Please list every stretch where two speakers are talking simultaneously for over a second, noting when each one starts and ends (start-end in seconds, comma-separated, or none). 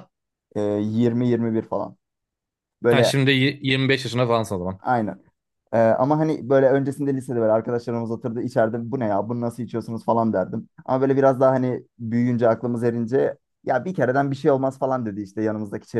none